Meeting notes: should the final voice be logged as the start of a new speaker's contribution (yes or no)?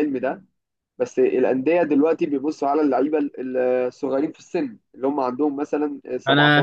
yes